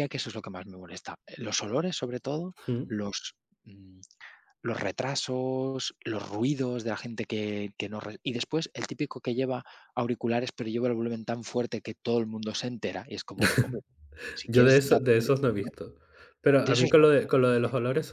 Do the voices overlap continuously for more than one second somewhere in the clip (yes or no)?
yes